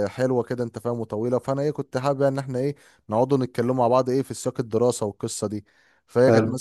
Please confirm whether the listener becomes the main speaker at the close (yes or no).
no